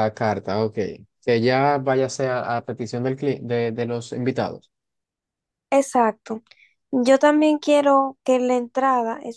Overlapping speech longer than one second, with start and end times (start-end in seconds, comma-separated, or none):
none